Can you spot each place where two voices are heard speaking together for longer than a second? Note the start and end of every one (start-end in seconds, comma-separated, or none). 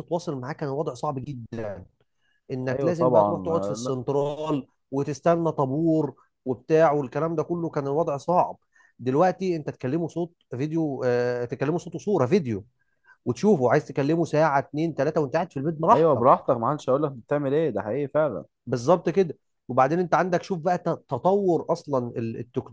2.7-3.9